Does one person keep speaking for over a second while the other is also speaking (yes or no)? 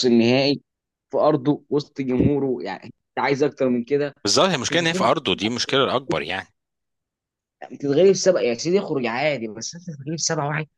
no